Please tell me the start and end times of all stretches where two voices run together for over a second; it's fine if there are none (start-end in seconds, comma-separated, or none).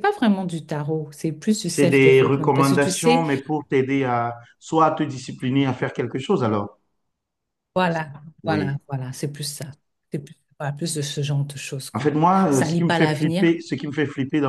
1.6-3.2, 11.9-13.6